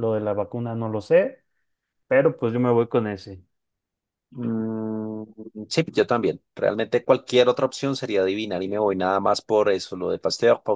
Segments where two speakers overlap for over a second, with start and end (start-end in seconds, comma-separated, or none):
none